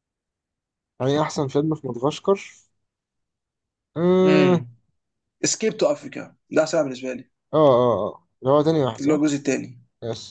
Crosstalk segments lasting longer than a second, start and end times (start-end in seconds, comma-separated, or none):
none